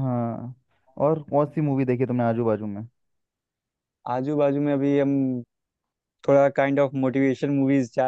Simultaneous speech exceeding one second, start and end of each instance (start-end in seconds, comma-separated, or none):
none